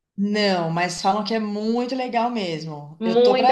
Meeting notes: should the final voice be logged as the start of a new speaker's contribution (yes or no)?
yes